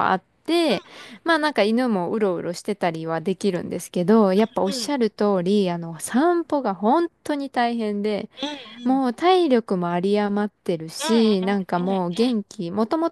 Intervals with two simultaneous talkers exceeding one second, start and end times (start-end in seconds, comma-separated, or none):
none